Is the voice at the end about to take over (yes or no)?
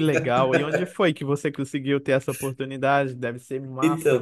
yes